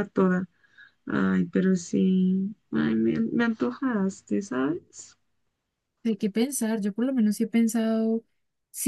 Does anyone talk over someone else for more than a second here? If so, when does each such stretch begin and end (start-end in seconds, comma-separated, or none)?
none